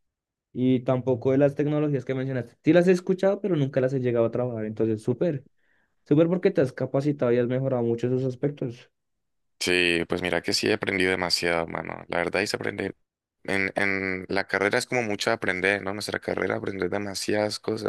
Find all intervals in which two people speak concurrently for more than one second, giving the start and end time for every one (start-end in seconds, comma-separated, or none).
none